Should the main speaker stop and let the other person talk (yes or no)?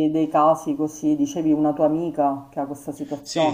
yes